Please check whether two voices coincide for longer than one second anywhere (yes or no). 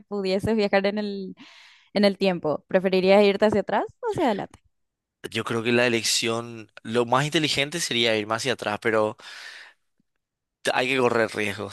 no